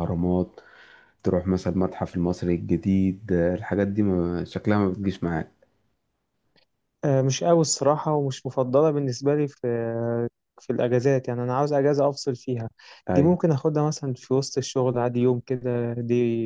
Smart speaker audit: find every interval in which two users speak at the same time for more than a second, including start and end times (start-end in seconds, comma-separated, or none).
none